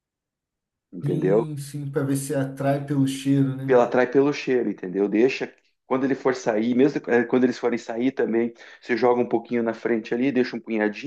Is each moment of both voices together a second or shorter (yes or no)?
yes